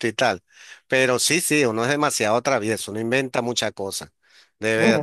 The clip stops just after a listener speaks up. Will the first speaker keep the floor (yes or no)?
no